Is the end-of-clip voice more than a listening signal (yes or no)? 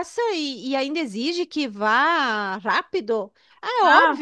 no